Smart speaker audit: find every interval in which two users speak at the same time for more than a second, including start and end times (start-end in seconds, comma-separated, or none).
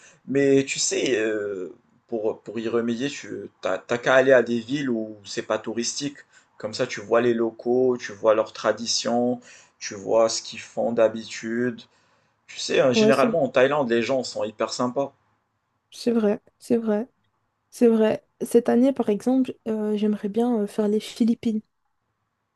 none